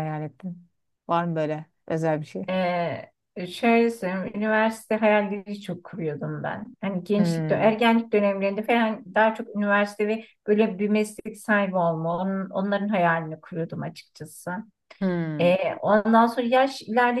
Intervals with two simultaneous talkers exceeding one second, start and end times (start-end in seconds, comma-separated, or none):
none